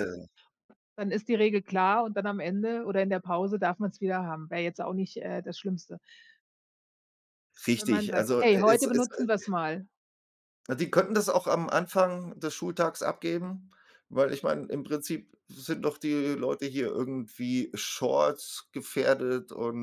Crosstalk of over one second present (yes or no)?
yes